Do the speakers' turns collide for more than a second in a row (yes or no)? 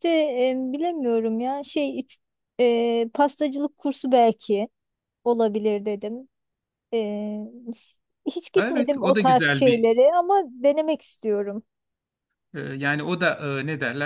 yes